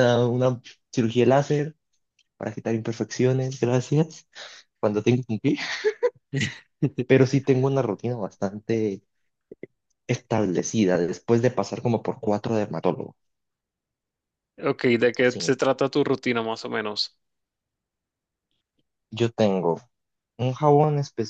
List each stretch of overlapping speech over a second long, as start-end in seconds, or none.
none